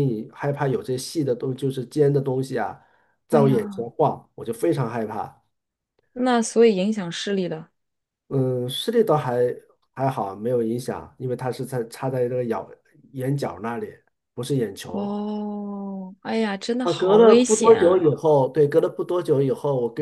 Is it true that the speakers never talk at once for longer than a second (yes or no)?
no